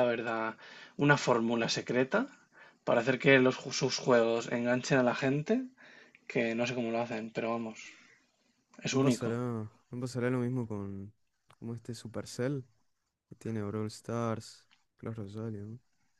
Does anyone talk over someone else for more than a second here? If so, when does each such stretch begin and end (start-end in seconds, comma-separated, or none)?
none